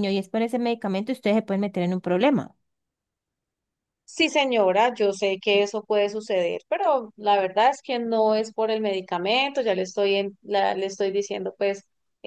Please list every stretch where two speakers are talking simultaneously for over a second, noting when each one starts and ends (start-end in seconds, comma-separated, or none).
none